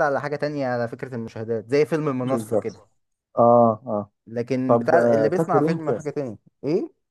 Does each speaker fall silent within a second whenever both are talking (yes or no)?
no